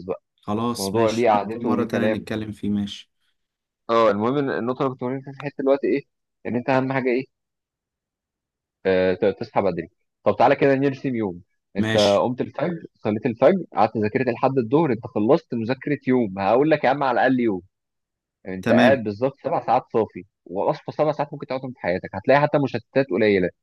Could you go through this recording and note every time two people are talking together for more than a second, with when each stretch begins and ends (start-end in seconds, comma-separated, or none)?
0.8-2.3